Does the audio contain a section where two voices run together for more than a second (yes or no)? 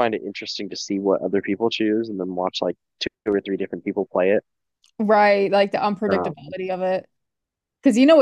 no